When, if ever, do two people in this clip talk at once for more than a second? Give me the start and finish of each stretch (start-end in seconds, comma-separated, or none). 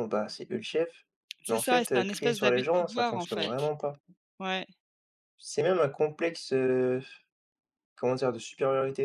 1.5-3.5